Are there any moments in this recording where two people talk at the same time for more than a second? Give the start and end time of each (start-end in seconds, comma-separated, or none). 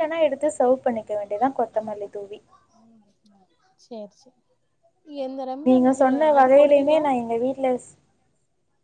5.2-7.0